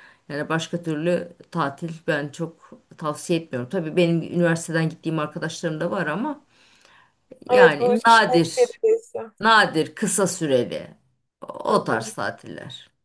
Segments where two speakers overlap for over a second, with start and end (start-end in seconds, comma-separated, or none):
7.5-8.8